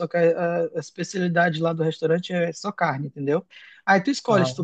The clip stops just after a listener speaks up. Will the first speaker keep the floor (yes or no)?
yes